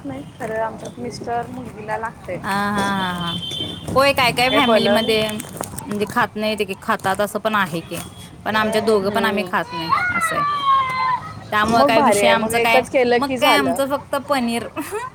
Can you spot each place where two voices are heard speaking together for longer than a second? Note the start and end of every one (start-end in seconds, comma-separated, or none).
11.8-13.8